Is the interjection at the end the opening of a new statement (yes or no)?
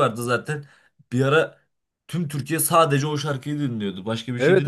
yes